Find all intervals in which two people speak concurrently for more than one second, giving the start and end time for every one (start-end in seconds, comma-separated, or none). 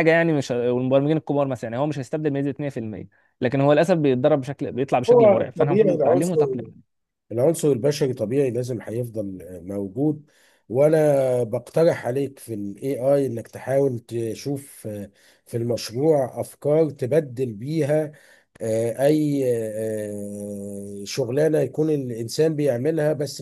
5.1-6.4